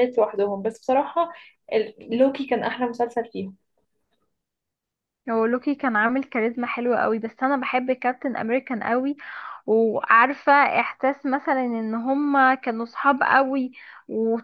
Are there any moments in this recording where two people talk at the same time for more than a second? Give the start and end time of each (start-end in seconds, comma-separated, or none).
none